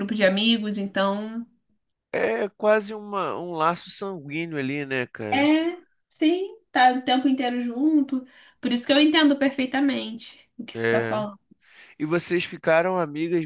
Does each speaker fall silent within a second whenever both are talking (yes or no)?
yes